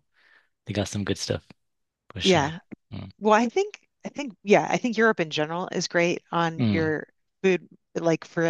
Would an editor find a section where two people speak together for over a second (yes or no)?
no